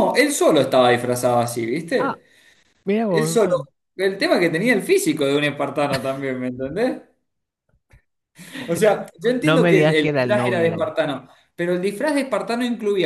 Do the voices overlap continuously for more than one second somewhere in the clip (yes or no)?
yes